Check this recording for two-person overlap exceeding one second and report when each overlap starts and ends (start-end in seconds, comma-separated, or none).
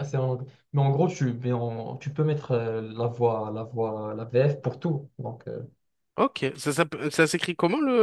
none